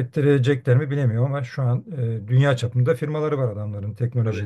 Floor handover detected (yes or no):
no